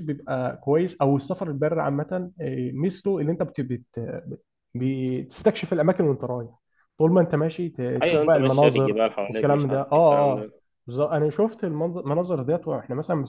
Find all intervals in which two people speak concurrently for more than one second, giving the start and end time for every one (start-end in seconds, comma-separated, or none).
8.0-10.5